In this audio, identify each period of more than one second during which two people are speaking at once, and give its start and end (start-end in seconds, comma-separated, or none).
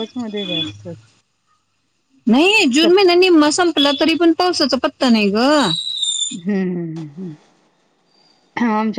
none